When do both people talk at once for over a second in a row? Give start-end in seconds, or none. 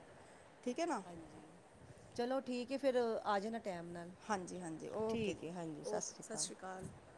5.1-6.5